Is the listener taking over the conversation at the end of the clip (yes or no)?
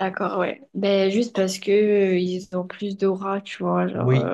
yes